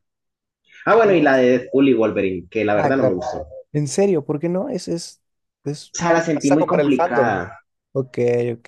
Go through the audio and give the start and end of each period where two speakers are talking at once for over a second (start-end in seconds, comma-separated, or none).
5.9-7.4